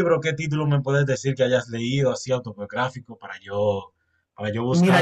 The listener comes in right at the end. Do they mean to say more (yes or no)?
yes